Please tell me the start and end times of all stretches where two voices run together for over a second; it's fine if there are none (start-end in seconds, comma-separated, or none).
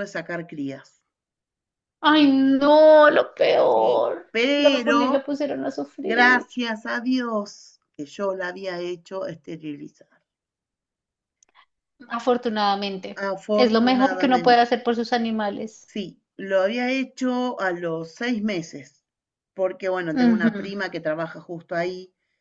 3.7-5.2, 13.3-14.7